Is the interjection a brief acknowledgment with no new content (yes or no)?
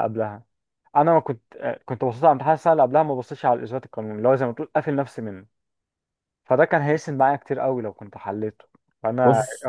yes